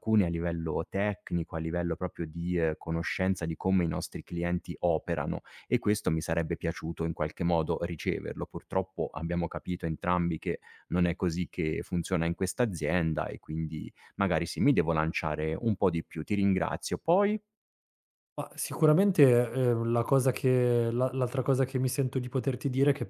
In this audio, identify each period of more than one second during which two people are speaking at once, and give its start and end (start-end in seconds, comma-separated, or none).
none